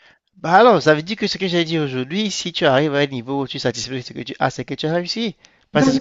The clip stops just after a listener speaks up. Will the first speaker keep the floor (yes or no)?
no